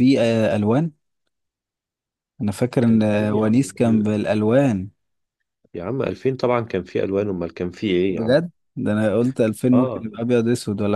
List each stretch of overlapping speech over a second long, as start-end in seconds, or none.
2.8-4.1